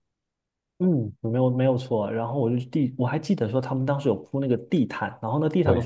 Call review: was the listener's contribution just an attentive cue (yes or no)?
yes